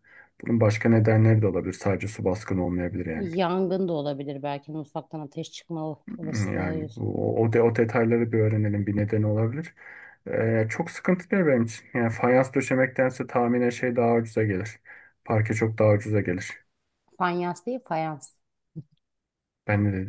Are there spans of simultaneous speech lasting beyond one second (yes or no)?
no